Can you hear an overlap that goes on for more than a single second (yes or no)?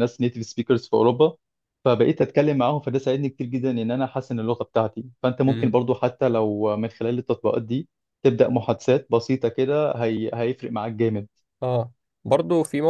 no